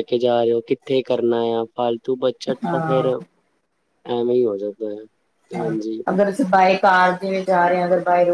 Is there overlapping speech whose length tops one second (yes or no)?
no